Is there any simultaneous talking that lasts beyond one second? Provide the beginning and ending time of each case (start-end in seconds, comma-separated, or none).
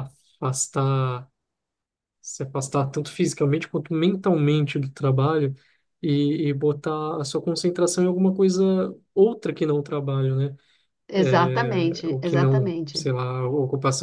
11.2-13.1